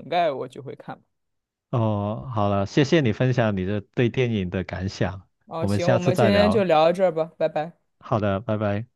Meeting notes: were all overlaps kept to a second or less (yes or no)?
no